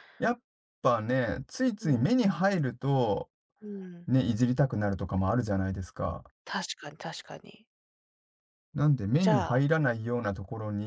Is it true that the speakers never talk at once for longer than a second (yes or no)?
yes